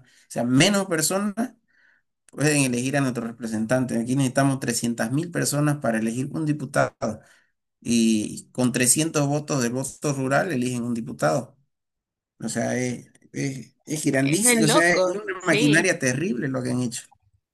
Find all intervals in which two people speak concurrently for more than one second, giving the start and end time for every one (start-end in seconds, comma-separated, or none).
14.2-15.9